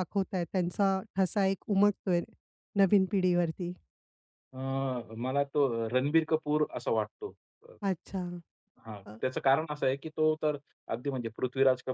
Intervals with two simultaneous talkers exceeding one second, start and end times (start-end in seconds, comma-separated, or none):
none